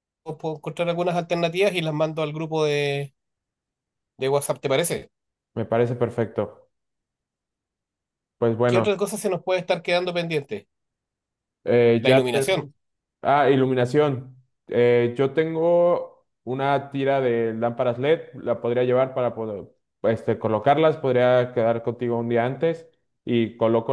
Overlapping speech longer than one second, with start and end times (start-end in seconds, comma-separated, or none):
none